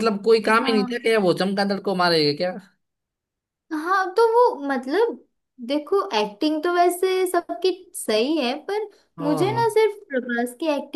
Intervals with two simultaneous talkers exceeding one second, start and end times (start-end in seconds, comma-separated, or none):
none